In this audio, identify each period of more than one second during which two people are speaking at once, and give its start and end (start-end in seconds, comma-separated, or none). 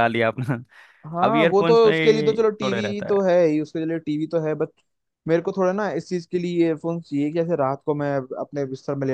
1.2-3.2